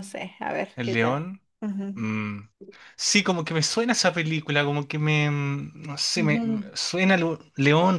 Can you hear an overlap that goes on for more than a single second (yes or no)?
no